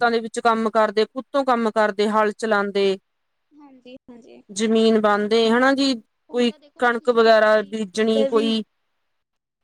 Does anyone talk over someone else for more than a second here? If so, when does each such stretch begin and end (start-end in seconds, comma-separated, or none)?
6.3-8.5